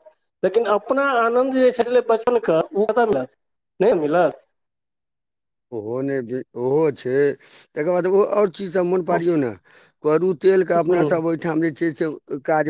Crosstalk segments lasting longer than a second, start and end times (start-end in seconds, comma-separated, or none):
none